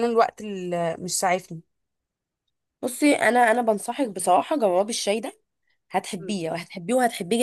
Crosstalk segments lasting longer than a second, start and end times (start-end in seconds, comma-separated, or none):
none